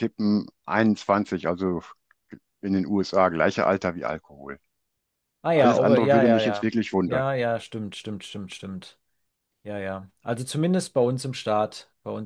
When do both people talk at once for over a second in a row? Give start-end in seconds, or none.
5.5-7.3